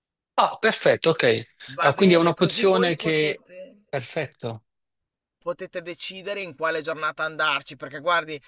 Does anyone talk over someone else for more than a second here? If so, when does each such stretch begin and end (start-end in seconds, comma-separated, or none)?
1.8-3.4